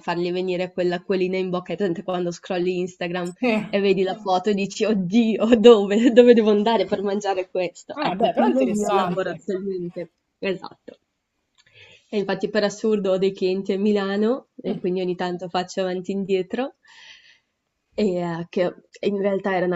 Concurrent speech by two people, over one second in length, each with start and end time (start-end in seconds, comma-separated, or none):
7.9-9.4